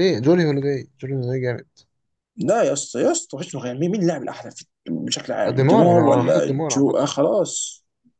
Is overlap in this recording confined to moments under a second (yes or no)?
no